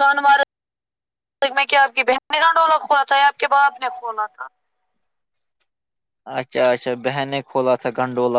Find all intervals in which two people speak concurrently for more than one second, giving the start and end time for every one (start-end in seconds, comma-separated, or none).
none